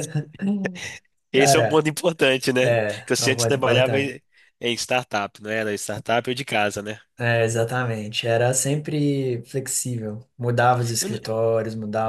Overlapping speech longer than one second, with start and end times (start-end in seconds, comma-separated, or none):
2.6-4.2